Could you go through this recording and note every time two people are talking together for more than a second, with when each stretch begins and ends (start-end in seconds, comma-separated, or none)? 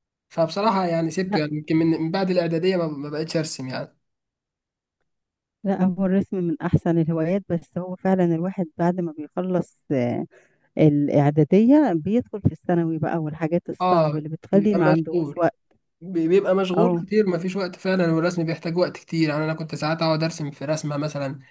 13.8-15.5